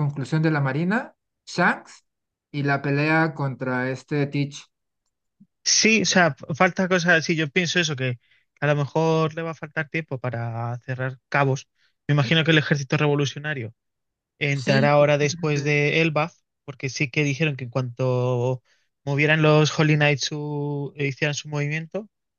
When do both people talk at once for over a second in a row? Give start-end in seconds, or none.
14.5-15.8